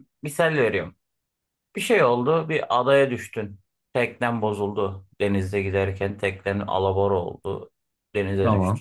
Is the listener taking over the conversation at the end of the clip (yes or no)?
no